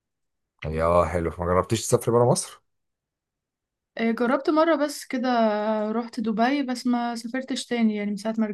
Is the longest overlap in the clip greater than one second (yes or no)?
no